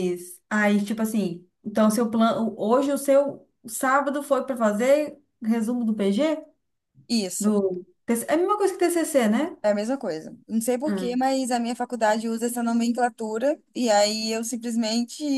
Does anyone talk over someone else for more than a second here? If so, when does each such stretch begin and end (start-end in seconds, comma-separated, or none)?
none